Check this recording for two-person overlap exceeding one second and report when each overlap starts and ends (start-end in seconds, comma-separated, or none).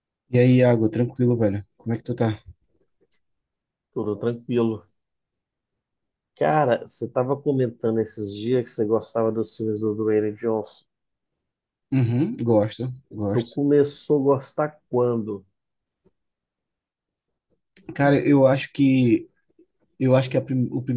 none